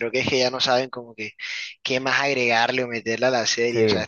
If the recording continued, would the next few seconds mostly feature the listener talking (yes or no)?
no